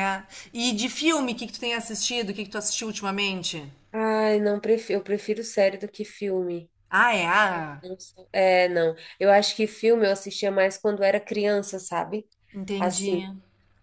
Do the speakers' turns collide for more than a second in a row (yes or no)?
no